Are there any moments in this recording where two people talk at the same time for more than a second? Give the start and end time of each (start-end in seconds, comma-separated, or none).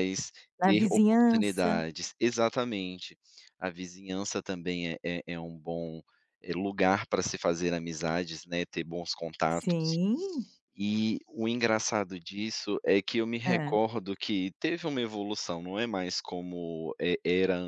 0.6-1.8